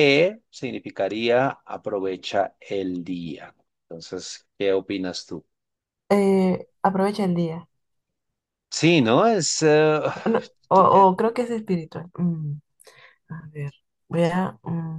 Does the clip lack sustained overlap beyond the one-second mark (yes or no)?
yes